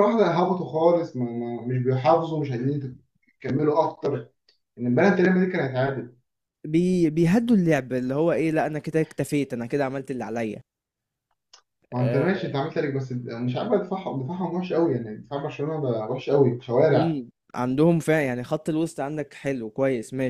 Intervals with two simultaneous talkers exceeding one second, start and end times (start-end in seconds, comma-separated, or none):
none